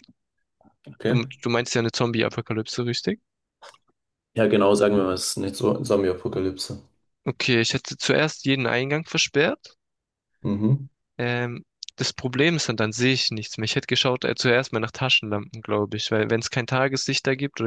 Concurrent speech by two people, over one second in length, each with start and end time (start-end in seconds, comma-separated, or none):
none